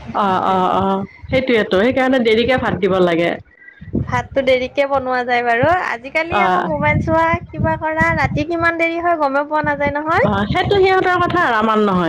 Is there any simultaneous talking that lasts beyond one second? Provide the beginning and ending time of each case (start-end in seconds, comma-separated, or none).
none